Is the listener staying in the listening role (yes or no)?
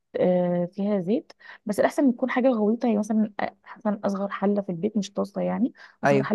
yes